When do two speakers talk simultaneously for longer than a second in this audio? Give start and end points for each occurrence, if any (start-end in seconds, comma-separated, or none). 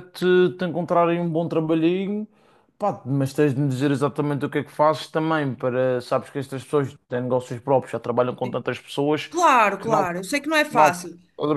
none